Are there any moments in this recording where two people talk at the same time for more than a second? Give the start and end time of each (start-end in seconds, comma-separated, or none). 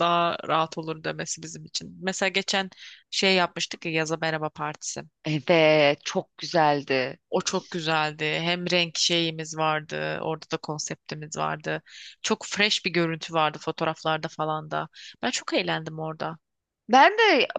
none